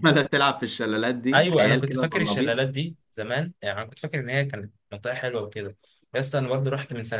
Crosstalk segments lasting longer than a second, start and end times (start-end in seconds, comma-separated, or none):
1.3-2.7